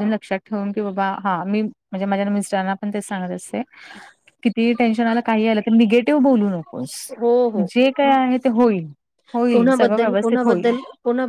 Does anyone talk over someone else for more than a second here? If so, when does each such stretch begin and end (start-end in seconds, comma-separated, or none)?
9.5-10.7